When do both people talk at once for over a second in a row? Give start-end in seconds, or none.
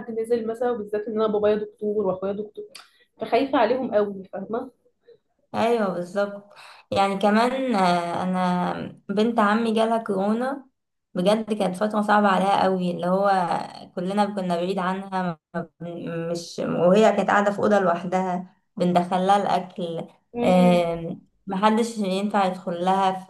none